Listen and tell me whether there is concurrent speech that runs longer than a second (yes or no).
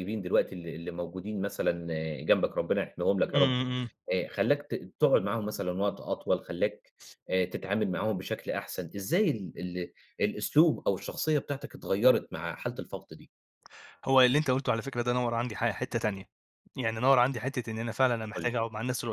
no